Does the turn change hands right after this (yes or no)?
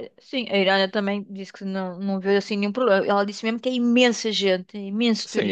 yes